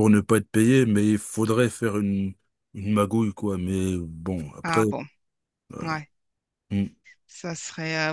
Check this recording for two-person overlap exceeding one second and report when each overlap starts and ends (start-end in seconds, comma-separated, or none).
none